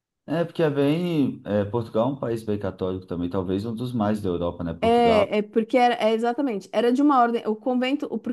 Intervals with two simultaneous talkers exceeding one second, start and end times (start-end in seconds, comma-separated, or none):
none